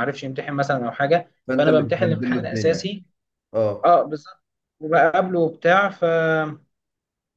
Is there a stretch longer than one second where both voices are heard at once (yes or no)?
yes